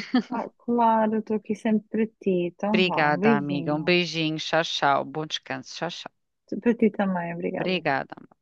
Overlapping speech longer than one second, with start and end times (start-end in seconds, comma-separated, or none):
2.7-3.9